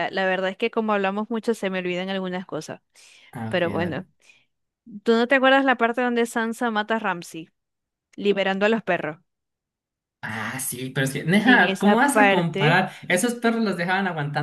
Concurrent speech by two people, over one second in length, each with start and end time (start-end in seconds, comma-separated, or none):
11.4-12.8